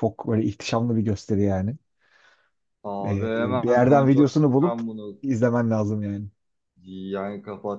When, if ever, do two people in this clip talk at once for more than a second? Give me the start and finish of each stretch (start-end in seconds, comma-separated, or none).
3.0-4.8